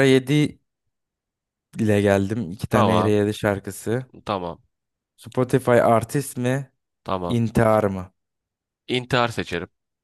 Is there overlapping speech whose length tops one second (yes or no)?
no